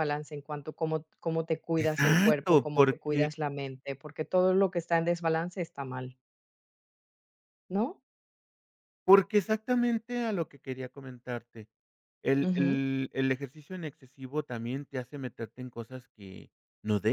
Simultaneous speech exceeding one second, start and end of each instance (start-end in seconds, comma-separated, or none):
1.8-3.3